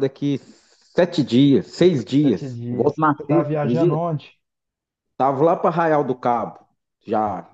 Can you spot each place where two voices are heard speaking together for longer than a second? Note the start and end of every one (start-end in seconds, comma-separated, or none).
2.2-4.0